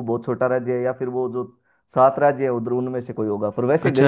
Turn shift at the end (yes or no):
yes